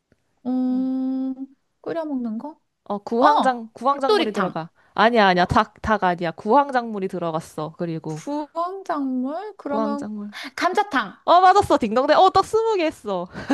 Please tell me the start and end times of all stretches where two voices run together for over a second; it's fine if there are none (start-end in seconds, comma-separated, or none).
3.2-4.6